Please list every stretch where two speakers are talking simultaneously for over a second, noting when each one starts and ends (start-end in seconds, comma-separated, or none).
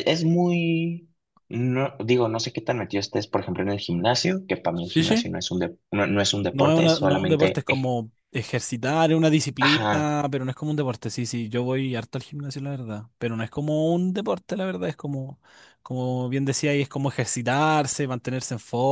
6.5-7.9